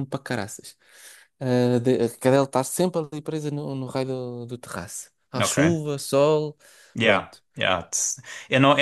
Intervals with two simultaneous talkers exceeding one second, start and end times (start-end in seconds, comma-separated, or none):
none